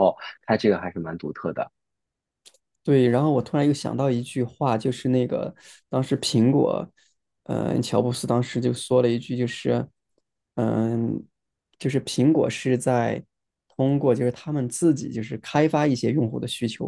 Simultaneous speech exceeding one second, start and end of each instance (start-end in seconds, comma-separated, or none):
none